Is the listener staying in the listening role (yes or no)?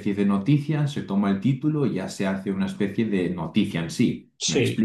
yes